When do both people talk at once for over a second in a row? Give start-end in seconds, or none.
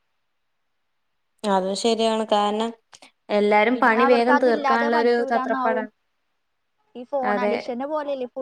3.8-5.8